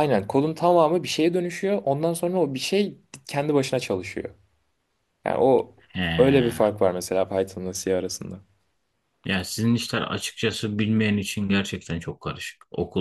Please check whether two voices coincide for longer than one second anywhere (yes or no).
no